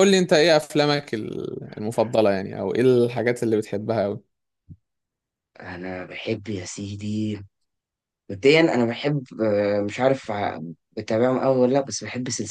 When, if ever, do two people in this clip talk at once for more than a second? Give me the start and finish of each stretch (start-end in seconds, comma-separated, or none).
none